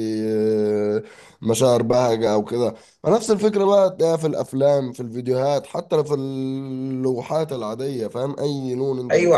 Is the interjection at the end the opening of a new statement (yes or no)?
yes